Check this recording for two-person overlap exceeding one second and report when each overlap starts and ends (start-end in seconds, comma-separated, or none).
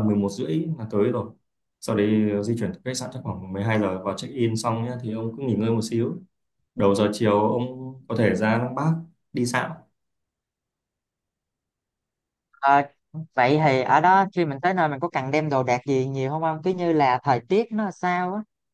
none